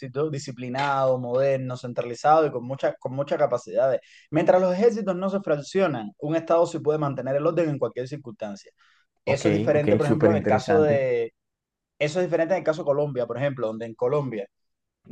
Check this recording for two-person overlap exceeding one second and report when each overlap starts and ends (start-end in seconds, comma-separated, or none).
9.3-11.1